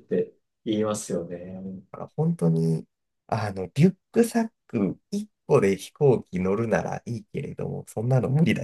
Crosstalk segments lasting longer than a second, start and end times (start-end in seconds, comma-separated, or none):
none